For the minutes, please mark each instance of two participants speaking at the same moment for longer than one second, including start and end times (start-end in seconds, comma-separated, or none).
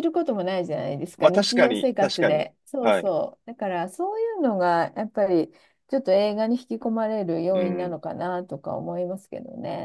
1.2-3.1